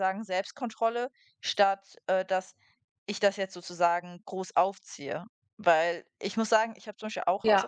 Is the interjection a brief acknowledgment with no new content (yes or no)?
yes